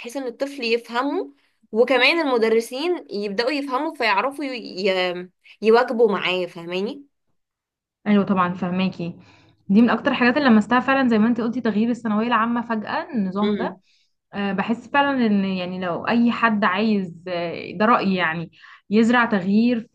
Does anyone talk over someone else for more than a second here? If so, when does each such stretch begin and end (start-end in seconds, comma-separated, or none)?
none